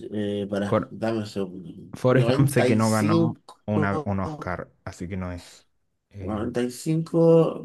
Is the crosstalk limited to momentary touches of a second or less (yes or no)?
no